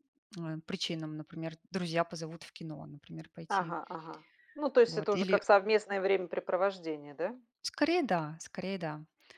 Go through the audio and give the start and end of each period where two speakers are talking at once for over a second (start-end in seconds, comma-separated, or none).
none